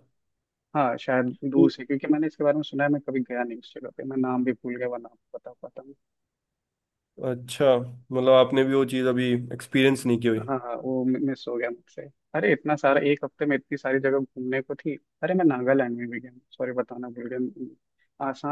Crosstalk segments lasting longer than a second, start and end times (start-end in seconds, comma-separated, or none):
none